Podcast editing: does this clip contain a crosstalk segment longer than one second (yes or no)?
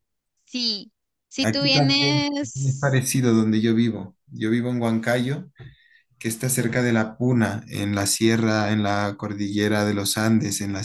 yes